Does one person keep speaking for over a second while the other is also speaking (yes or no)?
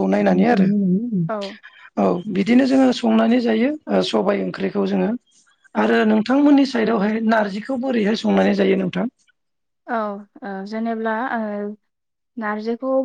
no